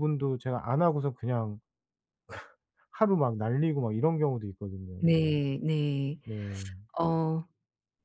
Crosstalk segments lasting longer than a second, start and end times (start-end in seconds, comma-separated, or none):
none